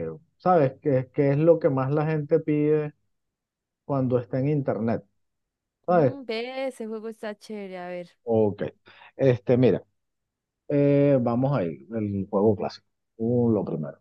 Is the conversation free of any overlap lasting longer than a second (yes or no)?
yes